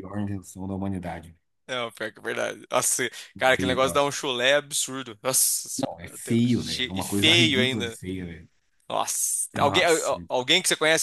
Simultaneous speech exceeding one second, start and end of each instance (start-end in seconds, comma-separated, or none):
5.8-8.0